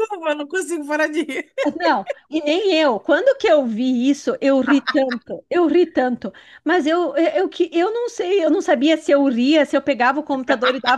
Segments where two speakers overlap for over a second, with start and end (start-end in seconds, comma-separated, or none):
none